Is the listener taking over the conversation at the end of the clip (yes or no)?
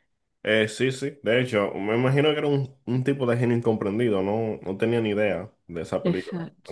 yes